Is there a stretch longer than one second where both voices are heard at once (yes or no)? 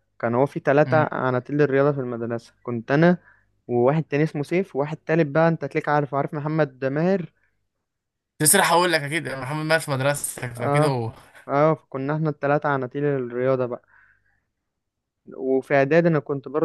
no